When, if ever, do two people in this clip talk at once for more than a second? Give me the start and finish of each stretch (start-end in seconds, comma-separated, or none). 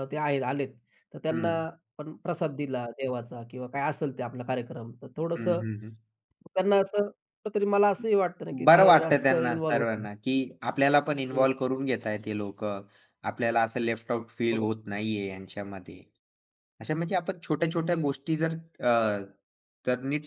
8.7-10.1